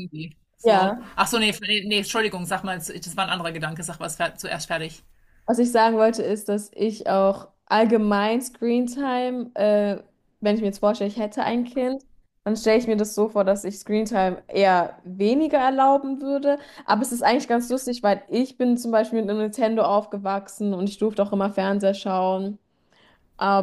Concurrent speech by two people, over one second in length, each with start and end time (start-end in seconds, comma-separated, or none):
none